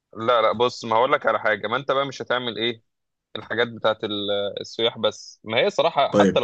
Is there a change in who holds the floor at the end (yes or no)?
no